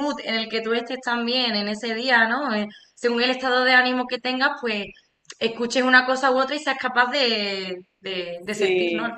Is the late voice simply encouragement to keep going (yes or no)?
no